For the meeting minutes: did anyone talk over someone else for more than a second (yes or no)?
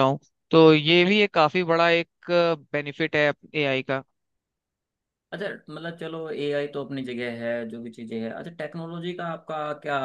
no